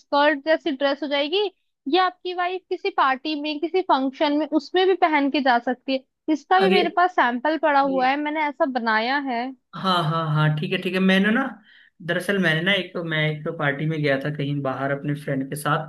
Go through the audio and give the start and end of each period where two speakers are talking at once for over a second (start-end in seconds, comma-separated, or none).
none